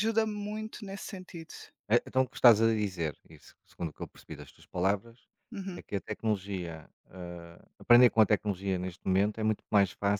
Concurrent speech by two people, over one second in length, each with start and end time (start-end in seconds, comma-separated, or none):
none